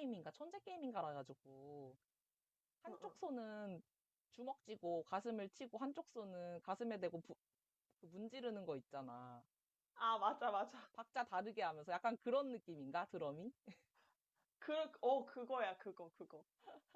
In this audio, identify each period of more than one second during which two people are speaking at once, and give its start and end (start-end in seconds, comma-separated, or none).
none